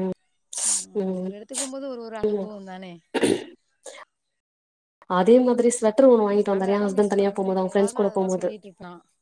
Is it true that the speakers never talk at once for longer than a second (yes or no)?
no